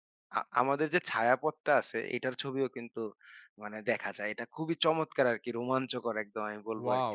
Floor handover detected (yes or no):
yes